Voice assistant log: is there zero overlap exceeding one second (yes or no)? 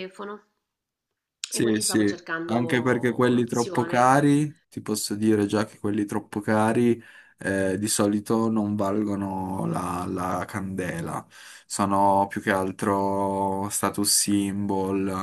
no